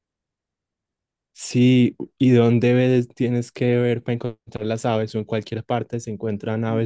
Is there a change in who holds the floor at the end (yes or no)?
yes